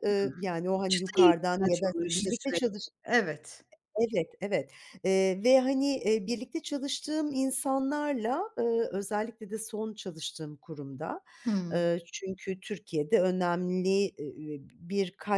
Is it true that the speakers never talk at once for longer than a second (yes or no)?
no